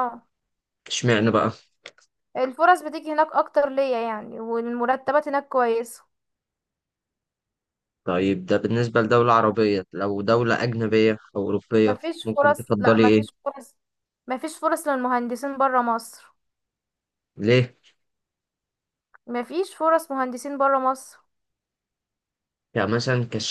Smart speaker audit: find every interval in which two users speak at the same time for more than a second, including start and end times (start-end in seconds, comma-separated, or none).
11.8-13.4